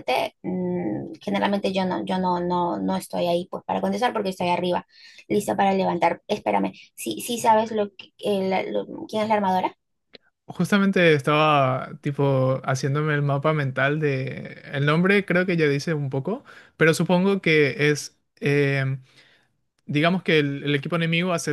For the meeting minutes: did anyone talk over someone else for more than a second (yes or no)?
no